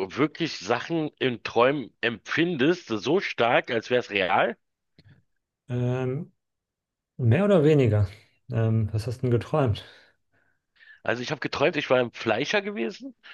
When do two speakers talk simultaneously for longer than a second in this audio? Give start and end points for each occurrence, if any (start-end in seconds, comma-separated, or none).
none